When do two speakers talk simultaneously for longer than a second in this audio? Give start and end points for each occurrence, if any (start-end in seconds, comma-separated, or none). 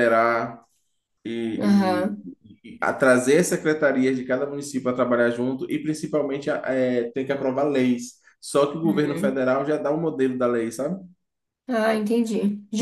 none